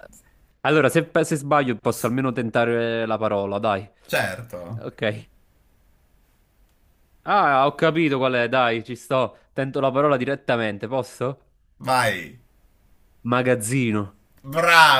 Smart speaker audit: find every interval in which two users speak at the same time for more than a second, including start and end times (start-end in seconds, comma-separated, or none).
none